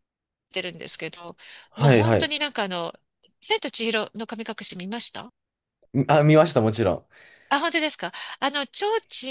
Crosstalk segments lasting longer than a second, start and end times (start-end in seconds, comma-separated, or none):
none